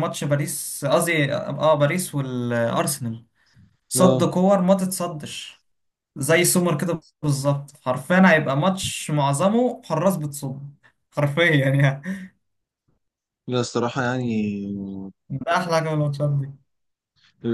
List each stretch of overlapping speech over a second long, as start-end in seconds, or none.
none